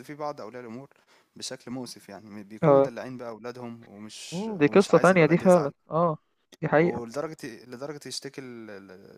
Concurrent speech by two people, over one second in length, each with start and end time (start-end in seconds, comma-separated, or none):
4.3-5.7